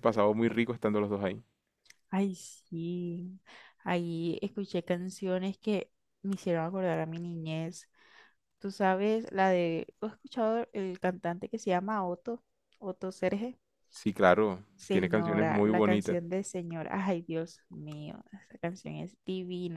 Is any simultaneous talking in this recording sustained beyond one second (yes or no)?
yes